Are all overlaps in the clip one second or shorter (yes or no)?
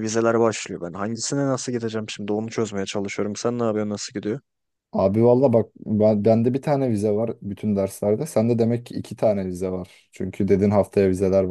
yes